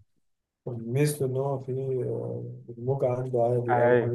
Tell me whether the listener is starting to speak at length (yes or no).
yes